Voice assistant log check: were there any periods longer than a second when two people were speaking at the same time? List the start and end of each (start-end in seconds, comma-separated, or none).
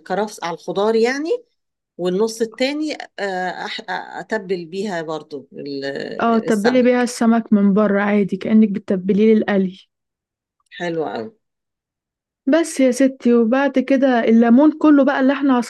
none